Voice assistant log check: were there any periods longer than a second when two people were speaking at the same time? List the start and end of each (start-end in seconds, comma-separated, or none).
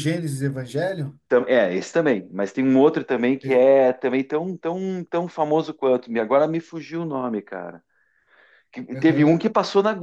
none